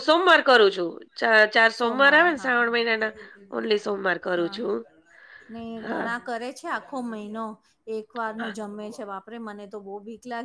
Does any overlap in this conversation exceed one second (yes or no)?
no